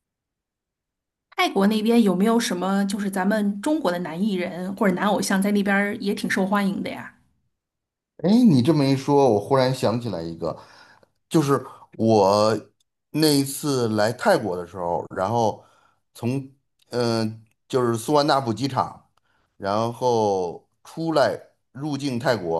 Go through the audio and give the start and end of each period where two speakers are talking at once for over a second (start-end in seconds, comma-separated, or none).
none